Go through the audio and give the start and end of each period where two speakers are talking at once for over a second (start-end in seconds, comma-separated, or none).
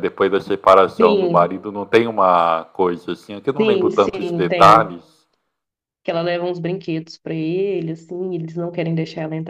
3.6-5.0